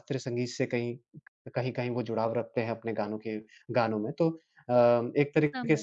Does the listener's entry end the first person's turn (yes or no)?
no